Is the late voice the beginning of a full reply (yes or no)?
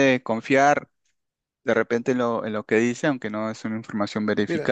yes